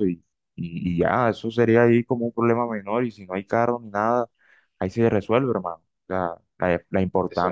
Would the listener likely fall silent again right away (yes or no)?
yes